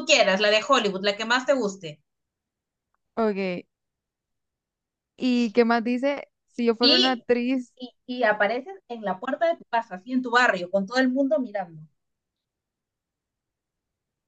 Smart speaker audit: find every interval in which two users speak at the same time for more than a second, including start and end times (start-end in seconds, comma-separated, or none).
none